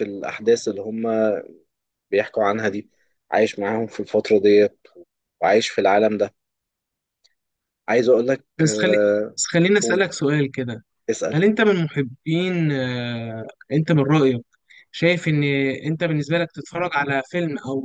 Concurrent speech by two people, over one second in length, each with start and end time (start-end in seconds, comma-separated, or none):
none